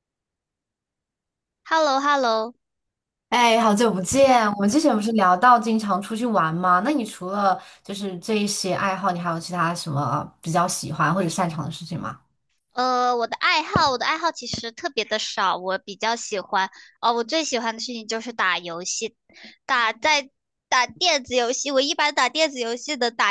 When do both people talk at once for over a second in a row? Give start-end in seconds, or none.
none